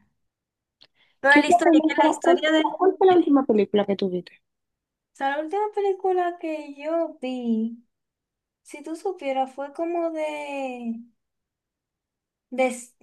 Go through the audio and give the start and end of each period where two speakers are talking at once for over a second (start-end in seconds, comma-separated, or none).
1.3-3.0